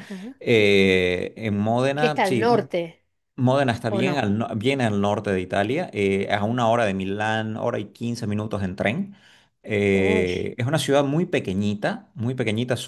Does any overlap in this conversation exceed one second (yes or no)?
no